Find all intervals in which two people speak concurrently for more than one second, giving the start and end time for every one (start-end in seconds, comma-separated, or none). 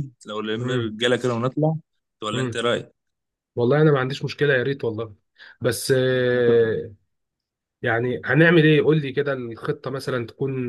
none